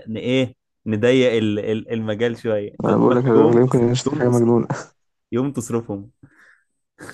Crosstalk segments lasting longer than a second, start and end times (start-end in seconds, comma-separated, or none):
2.8-4.7